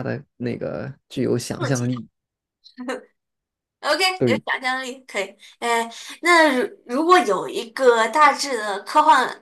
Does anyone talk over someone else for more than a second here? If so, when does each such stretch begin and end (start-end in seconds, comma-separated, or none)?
none